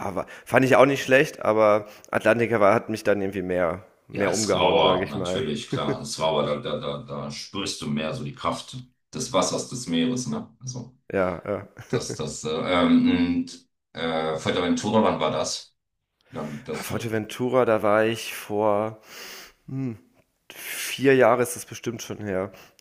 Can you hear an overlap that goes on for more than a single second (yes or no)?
yes